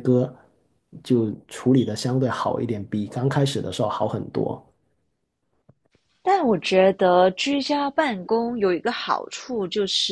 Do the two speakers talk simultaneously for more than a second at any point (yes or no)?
no